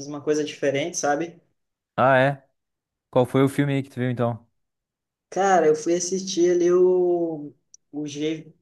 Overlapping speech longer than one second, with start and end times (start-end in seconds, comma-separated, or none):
none